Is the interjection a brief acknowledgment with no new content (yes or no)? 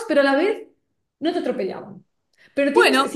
yes